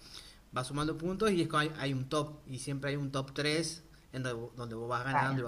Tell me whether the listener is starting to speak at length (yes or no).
no